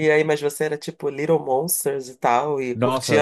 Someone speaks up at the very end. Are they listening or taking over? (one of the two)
taking over